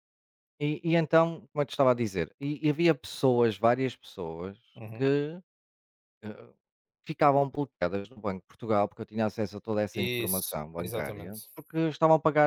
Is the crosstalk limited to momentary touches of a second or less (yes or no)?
no